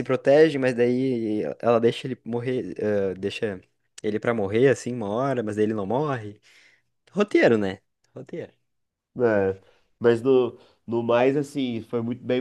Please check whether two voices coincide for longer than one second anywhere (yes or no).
no